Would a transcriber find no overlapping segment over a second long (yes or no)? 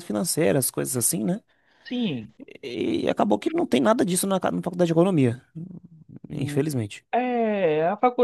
yes